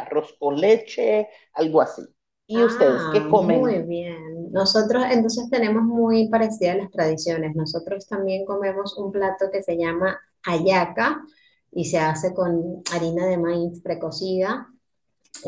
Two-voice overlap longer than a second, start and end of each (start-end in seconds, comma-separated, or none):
2.5-3.8